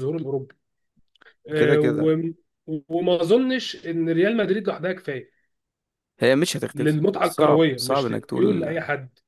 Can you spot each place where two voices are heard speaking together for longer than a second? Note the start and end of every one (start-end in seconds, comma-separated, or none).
6.7-8.7